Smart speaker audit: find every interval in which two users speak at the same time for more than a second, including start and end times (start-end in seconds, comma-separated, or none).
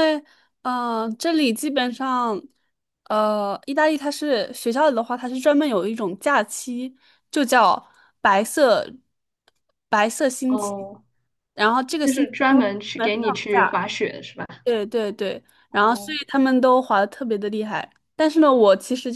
12.0-13.8